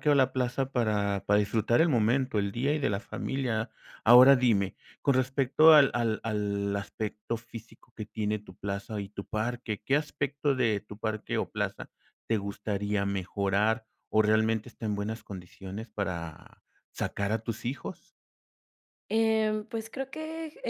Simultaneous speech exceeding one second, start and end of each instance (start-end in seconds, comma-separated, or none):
none